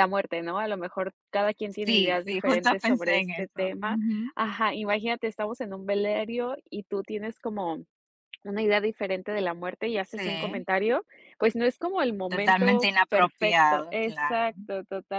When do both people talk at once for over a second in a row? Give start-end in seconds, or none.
1.7-4.0, 12.3-14.5